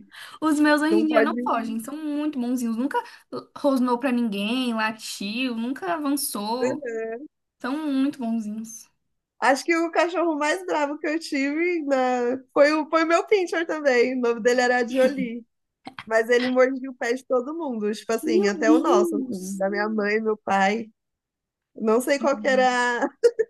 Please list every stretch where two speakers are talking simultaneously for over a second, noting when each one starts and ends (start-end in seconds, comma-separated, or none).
18.2-19.6